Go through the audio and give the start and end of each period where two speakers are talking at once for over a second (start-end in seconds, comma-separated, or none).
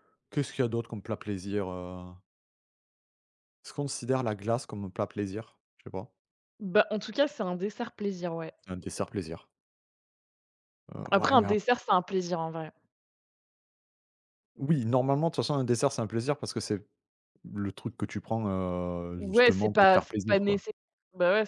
19.1-20.6